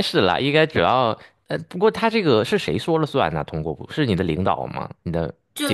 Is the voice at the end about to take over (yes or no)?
yes